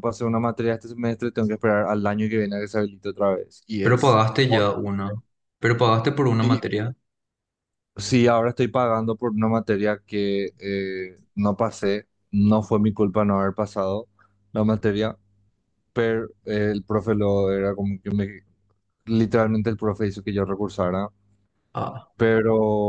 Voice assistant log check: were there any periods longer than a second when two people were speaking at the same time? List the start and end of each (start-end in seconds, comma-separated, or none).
none